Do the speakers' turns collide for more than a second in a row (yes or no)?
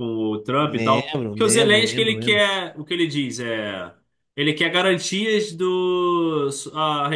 yes